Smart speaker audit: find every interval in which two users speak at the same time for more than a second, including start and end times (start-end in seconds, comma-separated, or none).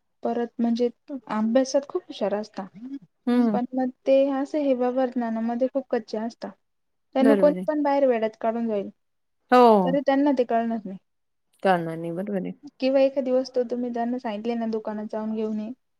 none